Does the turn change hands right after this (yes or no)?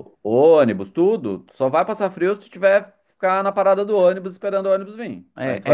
yes